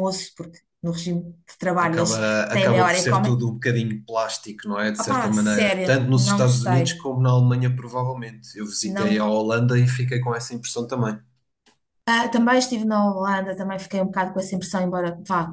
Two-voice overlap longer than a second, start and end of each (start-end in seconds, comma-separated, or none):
1.8-3.4, 5.0-6.9